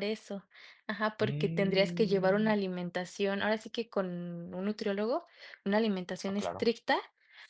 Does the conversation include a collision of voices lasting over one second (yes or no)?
yes